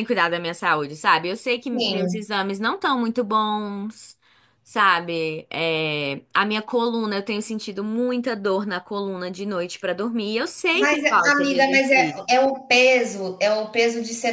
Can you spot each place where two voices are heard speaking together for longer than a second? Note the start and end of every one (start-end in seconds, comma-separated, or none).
10.7-12.2